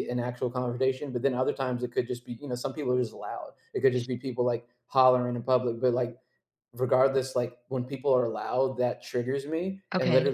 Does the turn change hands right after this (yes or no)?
no